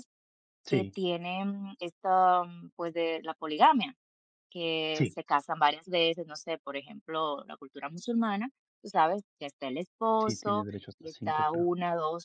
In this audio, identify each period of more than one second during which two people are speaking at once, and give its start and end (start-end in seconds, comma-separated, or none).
10.2-11.7